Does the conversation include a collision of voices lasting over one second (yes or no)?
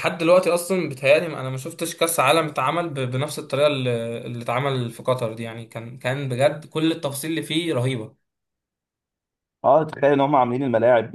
no